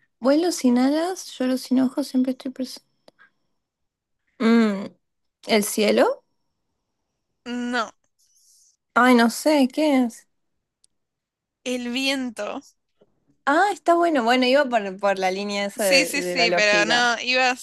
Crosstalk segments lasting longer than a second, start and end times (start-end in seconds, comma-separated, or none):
15.8-17.1